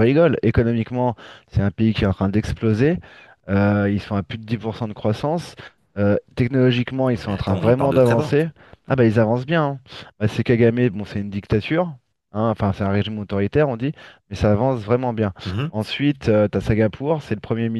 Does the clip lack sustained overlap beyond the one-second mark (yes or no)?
no